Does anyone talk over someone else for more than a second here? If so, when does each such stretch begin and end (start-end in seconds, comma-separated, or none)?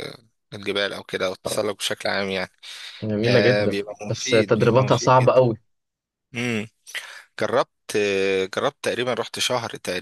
3.2-5.4